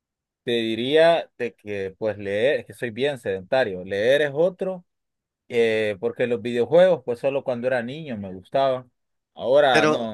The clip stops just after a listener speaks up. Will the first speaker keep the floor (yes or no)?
yes